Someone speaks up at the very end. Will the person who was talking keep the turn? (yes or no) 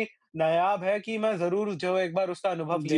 no